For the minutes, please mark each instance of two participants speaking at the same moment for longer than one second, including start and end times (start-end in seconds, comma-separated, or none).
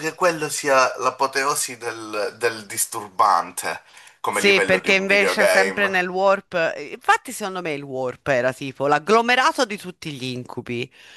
4.3-5.9